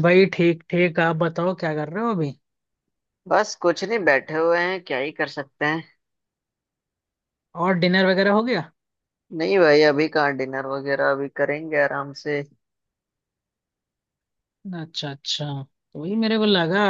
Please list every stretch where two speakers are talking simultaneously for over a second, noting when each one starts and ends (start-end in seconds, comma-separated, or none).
none